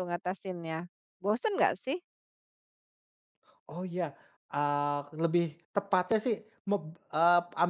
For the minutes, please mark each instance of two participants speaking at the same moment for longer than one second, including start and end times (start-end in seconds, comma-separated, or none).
none